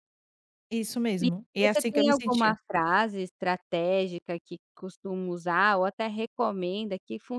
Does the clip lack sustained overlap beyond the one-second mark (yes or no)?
no